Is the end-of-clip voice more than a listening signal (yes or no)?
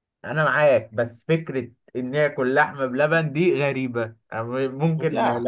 no